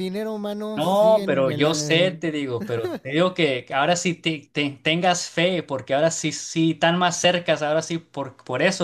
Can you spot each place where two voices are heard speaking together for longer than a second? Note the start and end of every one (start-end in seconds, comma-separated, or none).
0.7-2.2